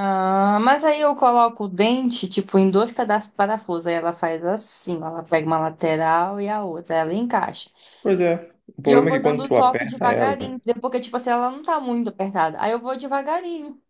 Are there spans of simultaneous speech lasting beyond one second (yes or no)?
yes